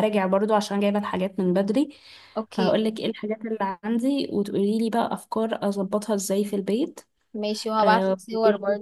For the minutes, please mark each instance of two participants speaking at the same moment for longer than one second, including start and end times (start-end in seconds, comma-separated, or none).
none